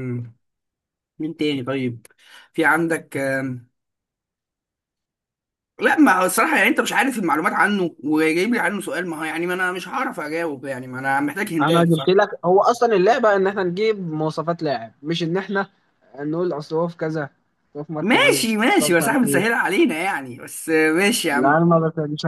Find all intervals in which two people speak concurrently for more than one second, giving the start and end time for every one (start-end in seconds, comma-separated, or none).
18.0-19.6